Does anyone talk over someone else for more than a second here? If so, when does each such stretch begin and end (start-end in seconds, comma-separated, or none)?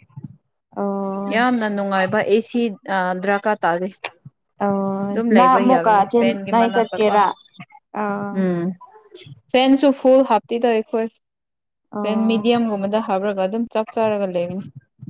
5.1-7.2